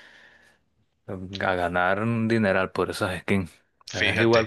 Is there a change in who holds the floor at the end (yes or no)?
no